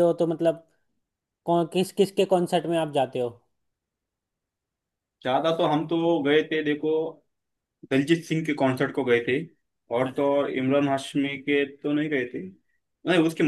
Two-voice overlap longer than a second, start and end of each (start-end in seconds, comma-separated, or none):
none